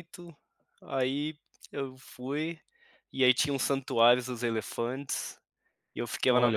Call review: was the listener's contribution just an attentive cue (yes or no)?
no